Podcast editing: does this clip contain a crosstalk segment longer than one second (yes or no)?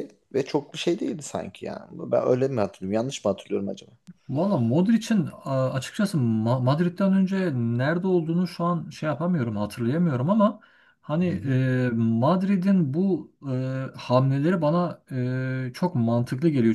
no